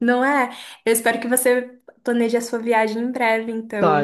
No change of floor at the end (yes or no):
no